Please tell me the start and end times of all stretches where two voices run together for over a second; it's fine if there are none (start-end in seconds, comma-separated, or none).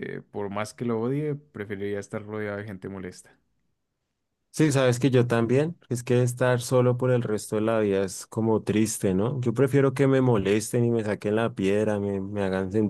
none